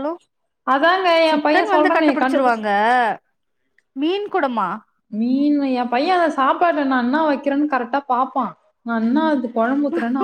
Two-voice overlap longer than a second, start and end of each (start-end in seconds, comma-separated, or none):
1.3-2.6